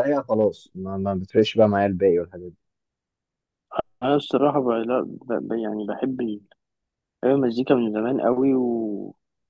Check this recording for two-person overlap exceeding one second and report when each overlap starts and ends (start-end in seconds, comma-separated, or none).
none